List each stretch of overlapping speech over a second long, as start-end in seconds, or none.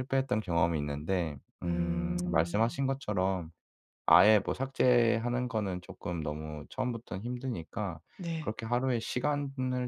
1.6-2.9